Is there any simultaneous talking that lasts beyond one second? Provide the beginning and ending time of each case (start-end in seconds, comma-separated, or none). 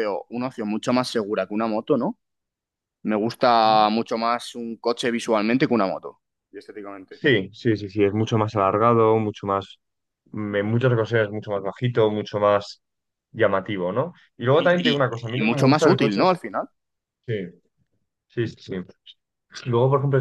14.5-16.4